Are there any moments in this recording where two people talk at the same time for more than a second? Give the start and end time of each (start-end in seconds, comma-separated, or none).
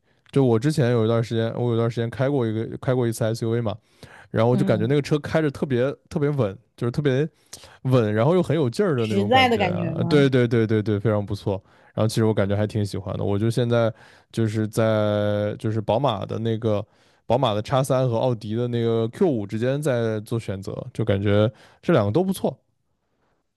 9.0-10.3